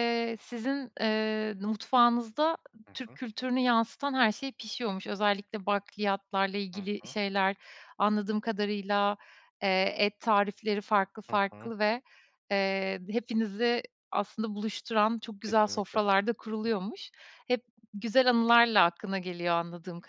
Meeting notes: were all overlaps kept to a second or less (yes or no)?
yes